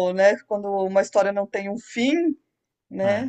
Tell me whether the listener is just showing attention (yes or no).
no